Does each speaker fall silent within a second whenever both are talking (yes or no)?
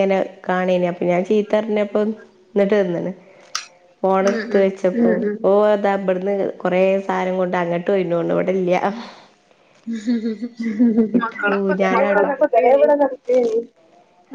no